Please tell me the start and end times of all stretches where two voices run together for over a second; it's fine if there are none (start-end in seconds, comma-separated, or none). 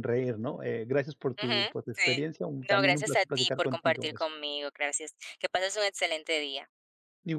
1.4-4.3